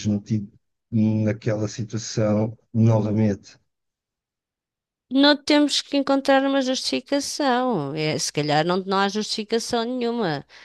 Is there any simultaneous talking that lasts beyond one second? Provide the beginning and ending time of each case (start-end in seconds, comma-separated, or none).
none